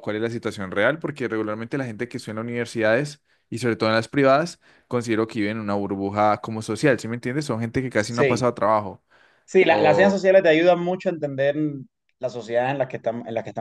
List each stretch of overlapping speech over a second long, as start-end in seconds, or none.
none